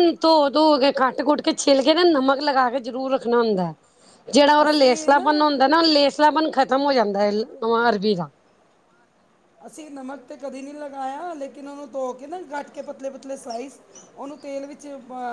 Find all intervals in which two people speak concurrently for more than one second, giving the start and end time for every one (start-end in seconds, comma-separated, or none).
none